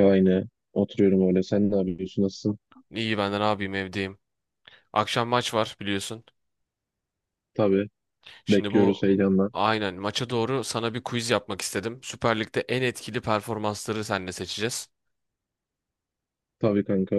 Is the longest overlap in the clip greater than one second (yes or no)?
no